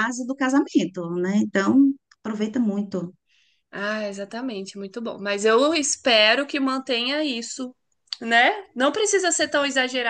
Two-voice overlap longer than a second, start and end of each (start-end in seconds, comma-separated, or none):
none